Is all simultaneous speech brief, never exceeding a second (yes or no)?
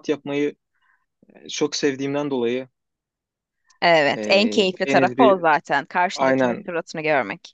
no